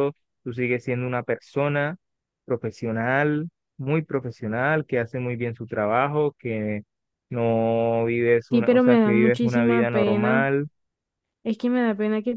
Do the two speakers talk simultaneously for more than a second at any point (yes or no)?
yes